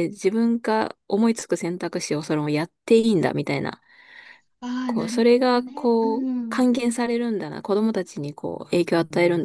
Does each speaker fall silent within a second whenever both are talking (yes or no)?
no